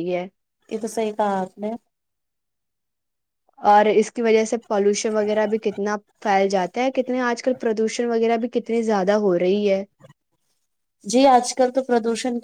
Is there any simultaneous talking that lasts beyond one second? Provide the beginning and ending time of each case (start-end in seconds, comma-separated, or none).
none